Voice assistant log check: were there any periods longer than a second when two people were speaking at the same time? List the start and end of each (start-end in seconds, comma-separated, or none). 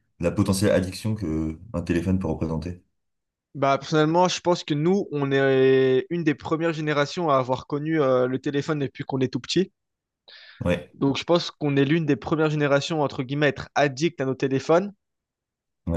none